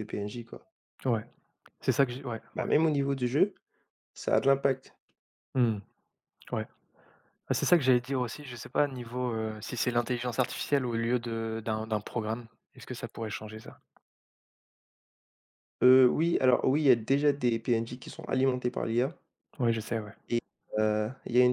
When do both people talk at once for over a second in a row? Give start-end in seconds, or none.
none